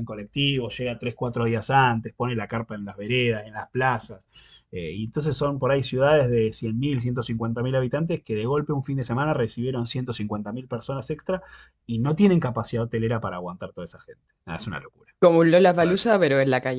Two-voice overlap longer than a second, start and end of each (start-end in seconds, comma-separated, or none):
none